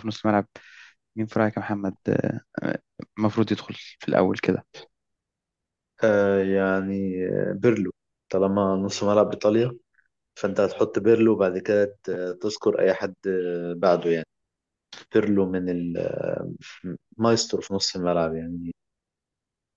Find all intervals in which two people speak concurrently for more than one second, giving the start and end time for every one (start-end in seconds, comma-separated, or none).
none